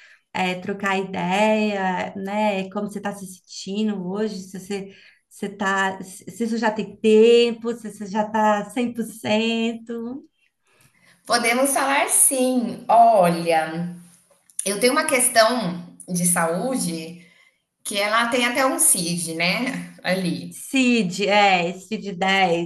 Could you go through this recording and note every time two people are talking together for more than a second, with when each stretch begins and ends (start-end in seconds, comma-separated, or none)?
none